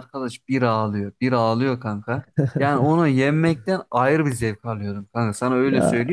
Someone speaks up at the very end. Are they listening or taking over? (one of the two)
listening